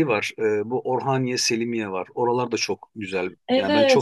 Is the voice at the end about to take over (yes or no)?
yes